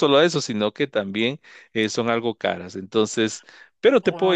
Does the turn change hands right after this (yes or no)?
yes